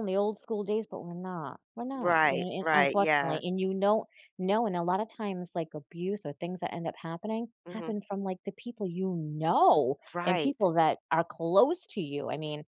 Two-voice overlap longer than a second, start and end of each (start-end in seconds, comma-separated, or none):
1.9-3.4